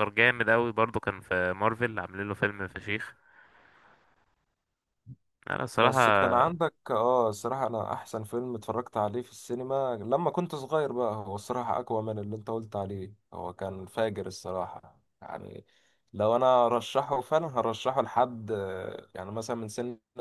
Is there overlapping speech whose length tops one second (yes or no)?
no